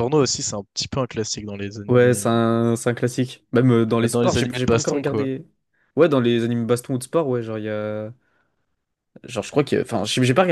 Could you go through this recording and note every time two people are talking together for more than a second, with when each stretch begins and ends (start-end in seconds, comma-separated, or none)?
4.0-5.3